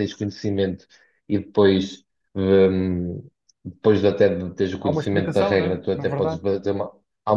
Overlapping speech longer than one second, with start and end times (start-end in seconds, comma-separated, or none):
4.8-6.4